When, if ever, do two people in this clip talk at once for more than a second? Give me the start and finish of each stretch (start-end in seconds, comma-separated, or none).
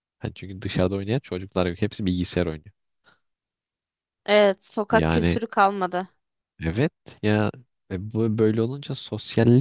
none